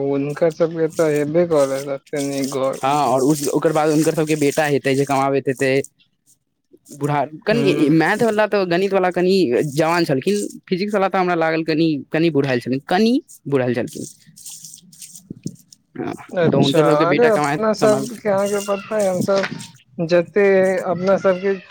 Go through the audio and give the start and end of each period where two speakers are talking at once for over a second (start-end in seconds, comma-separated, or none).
16.5-18.2